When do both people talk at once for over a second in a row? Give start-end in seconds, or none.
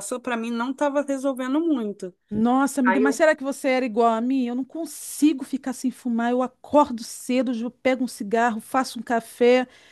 none